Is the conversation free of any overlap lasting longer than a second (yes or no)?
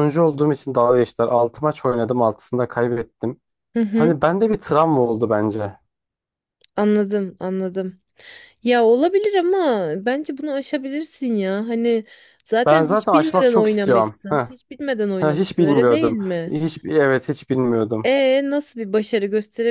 no